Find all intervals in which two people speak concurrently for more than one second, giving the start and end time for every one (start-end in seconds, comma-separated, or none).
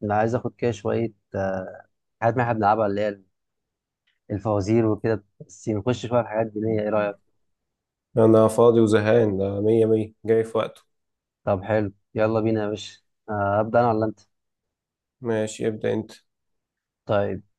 none